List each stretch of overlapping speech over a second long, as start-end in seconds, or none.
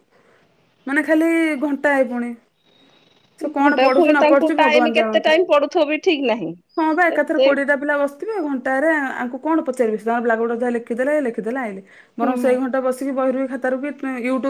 3.6-5.3